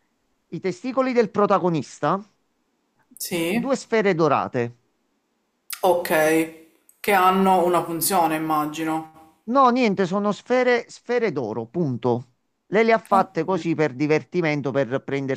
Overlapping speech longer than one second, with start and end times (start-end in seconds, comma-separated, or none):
none